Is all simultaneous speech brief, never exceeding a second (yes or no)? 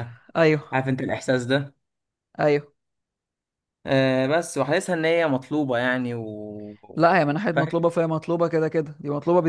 yes